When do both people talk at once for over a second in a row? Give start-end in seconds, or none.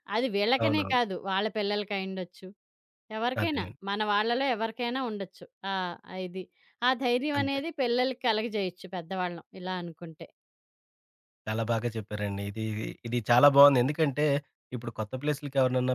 none